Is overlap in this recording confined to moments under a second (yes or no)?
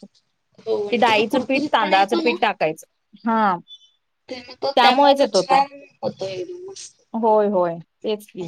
no